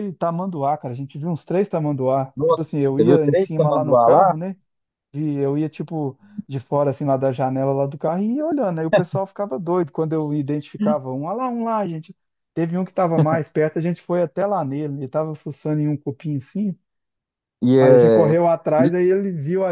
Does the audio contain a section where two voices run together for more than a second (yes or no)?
yes